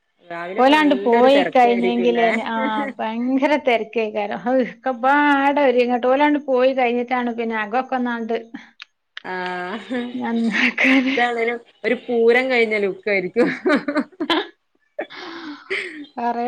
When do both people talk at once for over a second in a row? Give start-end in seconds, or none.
0.6-2.3